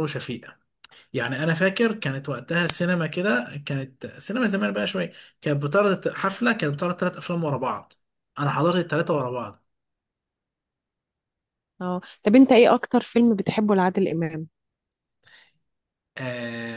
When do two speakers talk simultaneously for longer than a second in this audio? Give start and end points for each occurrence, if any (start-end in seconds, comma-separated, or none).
none